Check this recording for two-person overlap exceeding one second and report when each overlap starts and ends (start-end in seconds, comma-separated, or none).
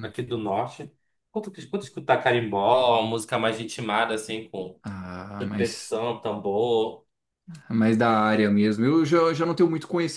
none